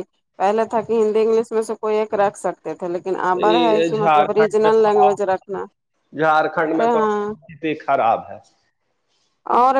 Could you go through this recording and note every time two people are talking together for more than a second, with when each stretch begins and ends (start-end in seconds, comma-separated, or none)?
3.5-5.1